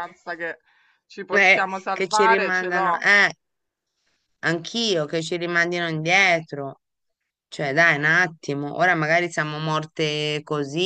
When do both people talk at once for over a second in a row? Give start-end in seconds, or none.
1.3-3.1